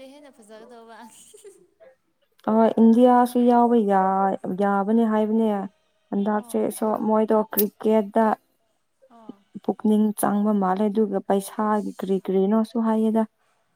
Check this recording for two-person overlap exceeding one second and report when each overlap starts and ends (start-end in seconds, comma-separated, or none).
none